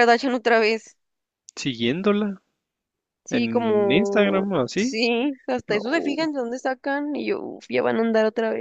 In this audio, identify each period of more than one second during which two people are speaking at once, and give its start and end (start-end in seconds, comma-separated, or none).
3.3-5.0